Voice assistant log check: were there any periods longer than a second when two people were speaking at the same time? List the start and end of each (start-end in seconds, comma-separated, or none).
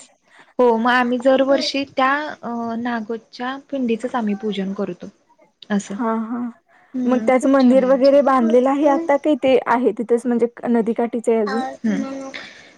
7.1-8.9